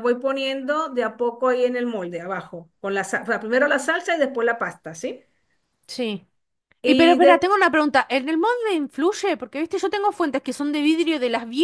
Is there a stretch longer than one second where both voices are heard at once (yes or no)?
no